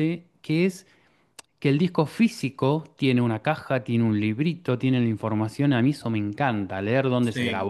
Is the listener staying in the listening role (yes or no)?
yes